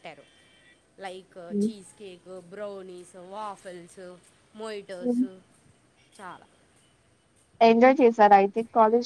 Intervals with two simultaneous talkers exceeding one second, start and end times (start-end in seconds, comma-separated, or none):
none